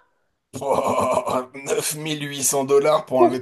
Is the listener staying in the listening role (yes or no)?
no